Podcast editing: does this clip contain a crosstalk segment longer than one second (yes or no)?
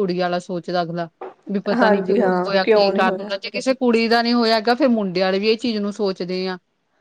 yes